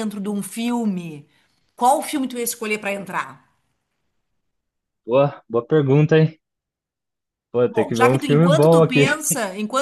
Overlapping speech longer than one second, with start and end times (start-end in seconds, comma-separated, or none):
7.7-9.0